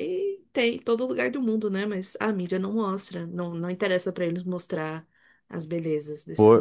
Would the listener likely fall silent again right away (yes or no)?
no